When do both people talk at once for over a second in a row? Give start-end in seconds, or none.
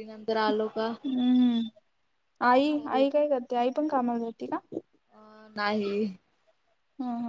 none